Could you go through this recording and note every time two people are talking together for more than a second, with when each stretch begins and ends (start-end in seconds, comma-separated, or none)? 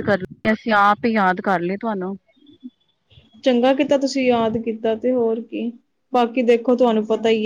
none